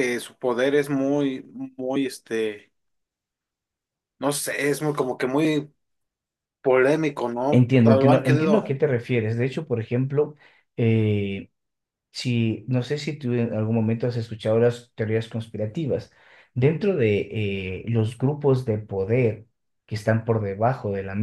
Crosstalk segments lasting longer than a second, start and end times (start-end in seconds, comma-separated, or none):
7.5-8.8